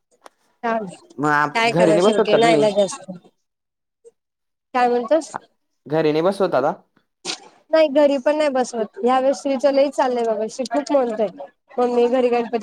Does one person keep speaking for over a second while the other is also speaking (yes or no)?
yes